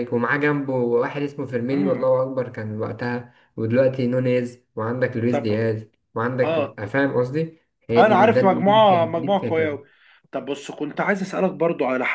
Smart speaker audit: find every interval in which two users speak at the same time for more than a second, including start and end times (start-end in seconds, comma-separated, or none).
8.0-9.8